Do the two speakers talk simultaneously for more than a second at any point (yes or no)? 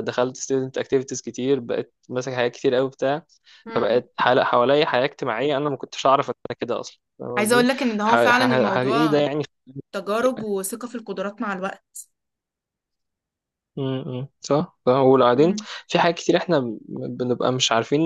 yes